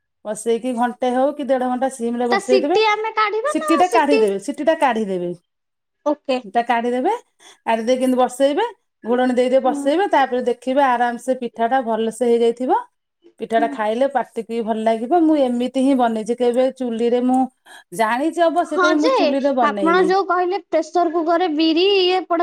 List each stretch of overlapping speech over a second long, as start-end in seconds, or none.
none